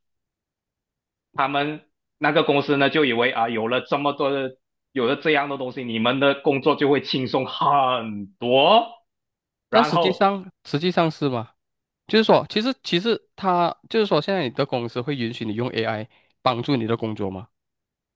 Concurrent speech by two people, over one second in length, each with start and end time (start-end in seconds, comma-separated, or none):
none